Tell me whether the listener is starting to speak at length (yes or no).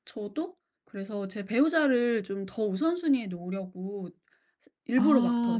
yes